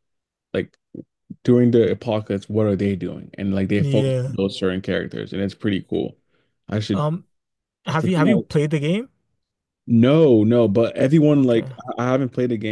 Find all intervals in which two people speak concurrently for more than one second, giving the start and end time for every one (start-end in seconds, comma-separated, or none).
none